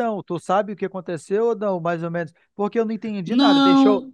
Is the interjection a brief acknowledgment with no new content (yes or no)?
yes